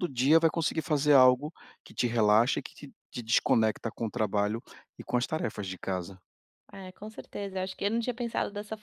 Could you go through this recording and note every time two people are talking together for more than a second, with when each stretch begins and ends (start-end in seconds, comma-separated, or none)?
none